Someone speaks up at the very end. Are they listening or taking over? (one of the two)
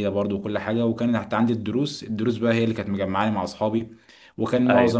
listening